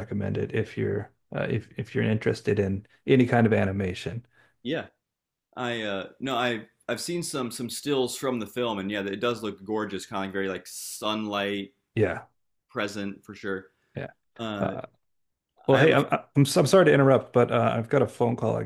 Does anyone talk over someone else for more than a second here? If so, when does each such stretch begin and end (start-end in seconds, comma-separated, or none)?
none